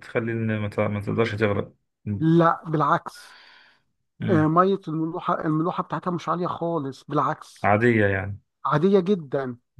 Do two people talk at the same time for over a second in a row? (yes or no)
no